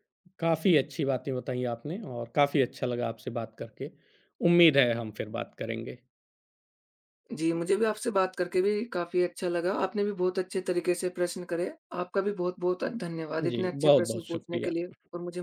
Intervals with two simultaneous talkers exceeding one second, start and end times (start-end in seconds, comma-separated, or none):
13.4-14.7